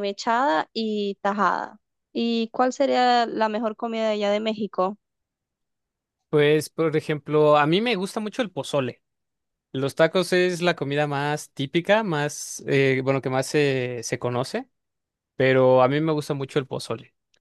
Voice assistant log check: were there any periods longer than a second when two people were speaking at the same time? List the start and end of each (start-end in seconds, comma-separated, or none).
none